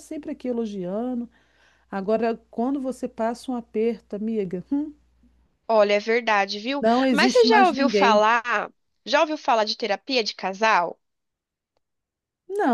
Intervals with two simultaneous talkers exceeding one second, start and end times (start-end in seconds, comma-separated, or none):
6.8-8.2